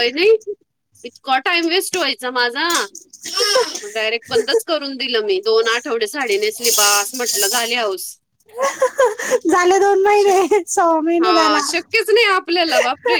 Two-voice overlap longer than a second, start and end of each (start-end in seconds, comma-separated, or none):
none